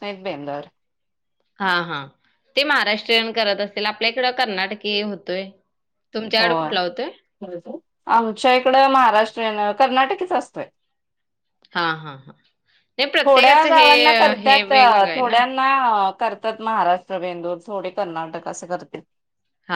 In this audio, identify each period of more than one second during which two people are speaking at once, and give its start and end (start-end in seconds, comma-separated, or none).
none